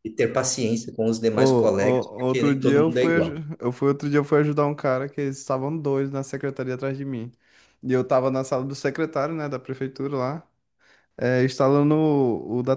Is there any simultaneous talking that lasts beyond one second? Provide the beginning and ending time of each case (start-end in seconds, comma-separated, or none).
1.3-3.4